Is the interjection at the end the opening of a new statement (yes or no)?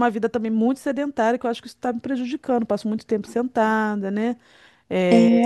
no